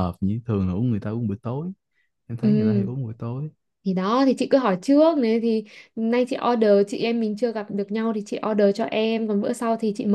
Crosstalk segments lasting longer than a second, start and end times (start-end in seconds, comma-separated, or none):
none